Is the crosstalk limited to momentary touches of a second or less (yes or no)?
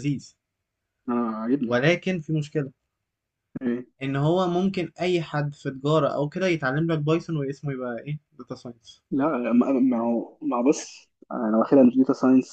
yes